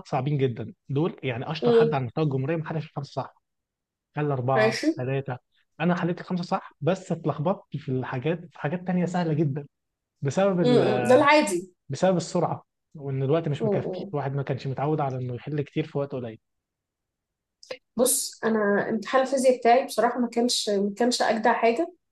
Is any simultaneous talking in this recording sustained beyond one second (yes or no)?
no